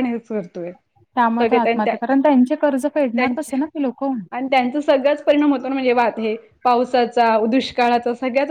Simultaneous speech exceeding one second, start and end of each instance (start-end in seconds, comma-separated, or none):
none